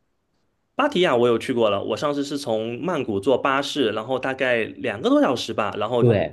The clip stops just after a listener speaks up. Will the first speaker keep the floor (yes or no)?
no